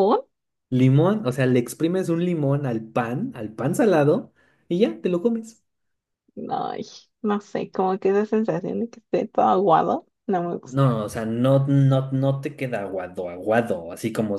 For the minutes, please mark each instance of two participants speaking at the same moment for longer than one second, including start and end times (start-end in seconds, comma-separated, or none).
none